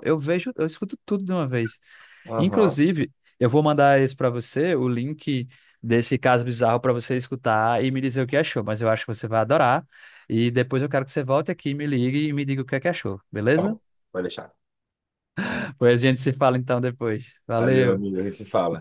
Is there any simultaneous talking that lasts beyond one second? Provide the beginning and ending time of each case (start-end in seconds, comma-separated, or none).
none